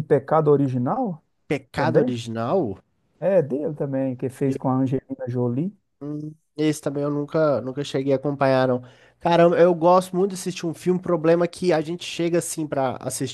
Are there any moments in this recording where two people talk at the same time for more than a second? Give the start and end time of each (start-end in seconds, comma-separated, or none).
none